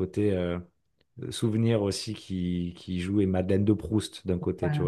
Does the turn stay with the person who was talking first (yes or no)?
no